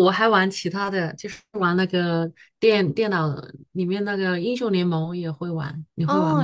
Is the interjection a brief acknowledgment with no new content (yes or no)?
no